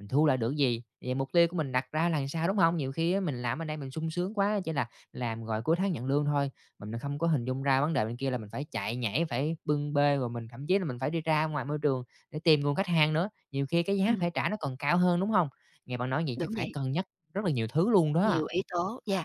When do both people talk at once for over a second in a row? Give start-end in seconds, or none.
none